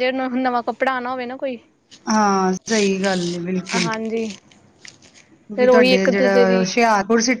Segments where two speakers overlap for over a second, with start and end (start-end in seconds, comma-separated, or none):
none